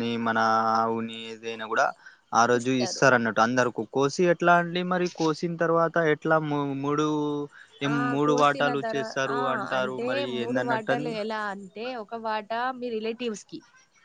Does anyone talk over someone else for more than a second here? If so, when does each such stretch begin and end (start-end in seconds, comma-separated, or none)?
7.9-11.1